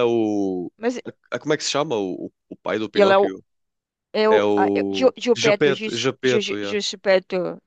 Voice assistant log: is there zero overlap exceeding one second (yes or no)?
no